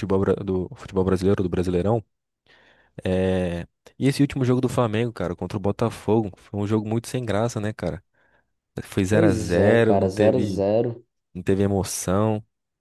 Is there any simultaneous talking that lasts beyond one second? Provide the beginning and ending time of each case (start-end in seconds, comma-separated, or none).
9.1-10.6